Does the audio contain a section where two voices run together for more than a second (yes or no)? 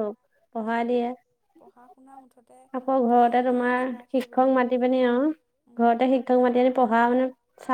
yes